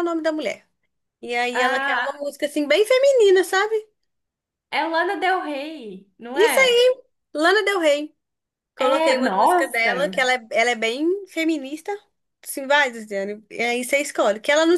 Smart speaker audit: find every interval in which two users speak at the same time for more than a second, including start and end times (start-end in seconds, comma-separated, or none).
8.8-10.2